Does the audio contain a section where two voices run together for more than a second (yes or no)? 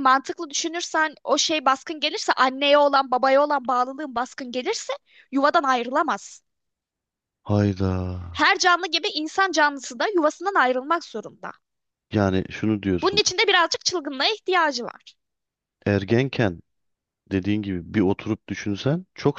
no